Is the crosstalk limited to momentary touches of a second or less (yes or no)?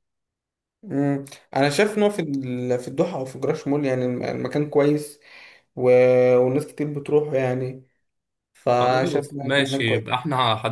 no